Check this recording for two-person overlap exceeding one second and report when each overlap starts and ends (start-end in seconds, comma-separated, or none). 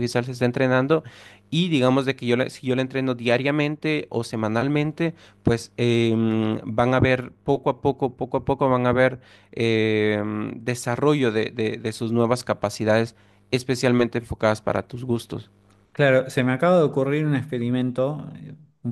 none